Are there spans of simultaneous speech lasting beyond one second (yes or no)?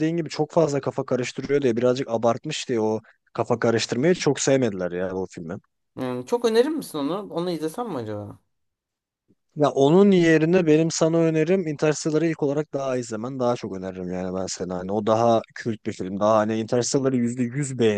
no